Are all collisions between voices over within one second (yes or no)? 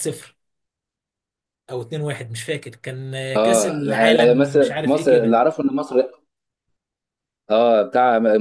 no